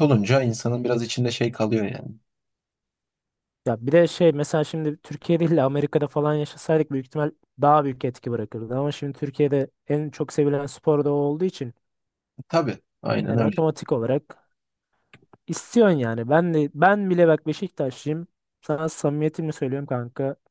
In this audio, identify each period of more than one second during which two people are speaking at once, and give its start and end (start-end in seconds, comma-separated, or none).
none